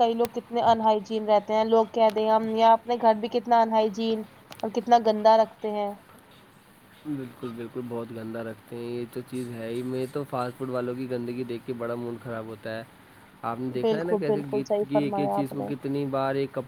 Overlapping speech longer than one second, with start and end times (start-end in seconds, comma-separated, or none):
13.8-15.7